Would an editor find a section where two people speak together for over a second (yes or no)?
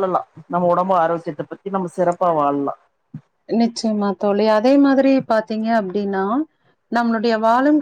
no